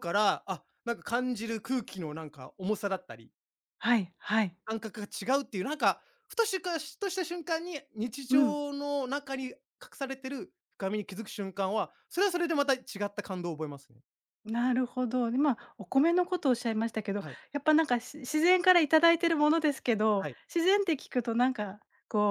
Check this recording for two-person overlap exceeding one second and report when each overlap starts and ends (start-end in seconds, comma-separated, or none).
none